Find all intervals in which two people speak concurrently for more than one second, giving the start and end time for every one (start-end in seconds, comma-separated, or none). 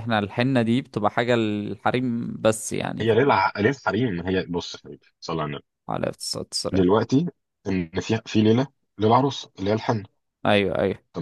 none